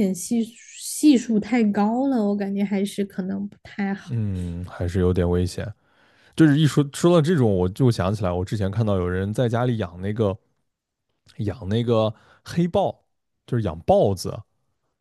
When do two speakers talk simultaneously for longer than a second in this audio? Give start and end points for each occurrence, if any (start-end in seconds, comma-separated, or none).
none